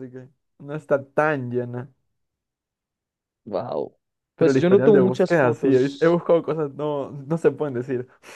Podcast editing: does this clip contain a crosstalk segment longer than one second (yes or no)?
yes